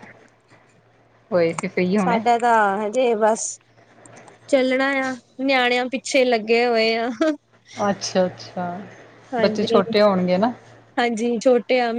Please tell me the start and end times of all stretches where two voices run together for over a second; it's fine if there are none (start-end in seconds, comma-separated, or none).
none